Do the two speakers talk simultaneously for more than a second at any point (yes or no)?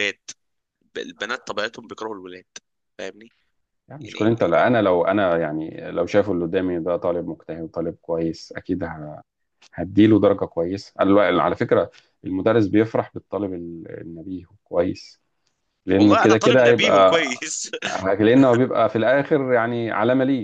yes